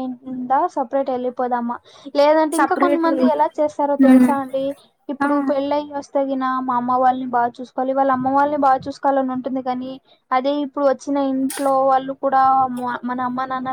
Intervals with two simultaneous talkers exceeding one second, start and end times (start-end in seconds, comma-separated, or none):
2.6-4.3